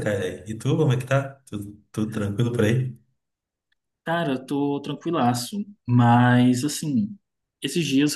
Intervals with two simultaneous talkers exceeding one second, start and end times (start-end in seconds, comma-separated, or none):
none